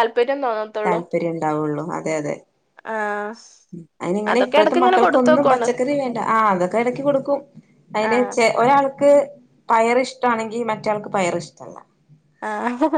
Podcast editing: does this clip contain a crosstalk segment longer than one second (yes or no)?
yes